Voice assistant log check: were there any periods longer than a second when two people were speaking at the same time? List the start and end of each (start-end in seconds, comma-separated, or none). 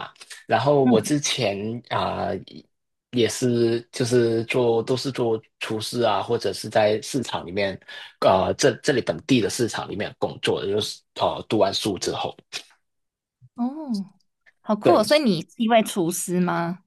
none